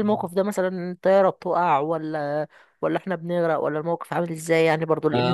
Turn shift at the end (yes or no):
yes